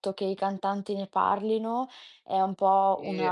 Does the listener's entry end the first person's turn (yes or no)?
no